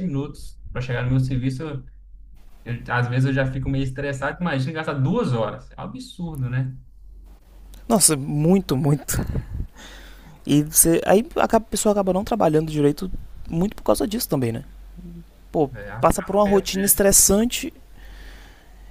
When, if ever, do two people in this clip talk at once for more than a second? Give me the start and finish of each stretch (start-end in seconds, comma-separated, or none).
15.7-17.0